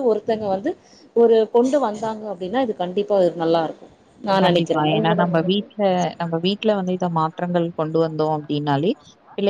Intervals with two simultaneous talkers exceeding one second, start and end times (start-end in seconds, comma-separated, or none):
none